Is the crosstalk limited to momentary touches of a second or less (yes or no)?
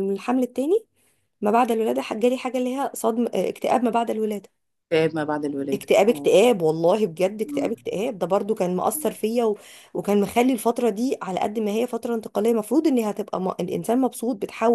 yes